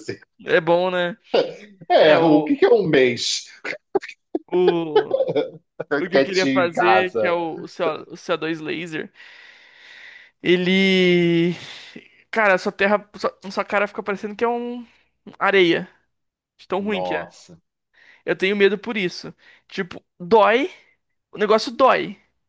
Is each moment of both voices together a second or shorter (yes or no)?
no